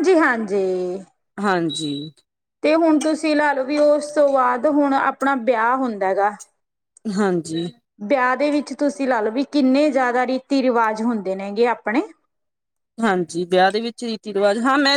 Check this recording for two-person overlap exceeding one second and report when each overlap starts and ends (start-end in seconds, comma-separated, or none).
none